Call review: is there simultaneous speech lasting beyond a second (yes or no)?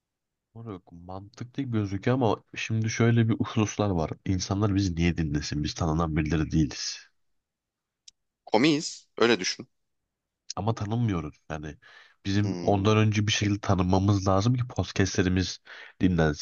no